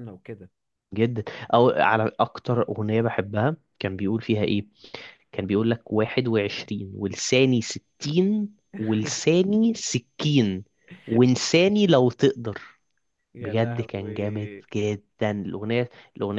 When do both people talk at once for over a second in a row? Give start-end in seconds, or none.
13.4-14.6